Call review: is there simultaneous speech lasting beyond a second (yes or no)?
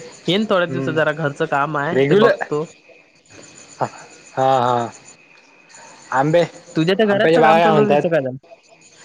yes